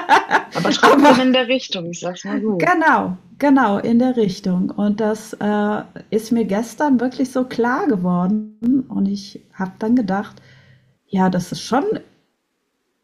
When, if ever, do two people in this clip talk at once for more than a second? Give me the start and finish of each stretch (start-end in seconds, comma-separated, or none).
none